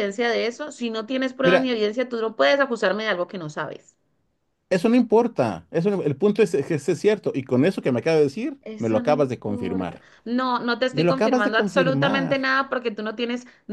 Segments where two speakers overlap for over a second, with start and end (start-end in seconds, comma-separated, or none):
8.6-10.0, 10.9-12.4